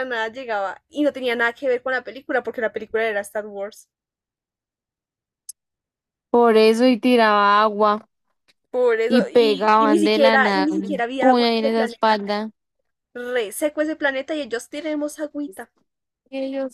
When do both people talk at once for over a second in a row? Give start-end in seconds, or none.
9.1-12.3